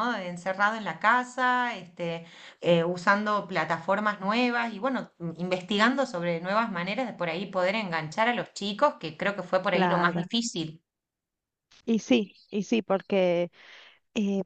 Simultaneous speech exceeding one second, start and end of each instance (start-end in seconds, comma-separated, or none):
none